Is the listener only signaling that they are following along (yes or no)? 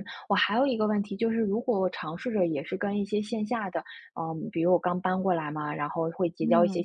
yes